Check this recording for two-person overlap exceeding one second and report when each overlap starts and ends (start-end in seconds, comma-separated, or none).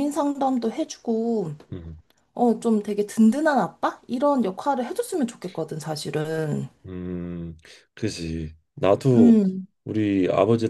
none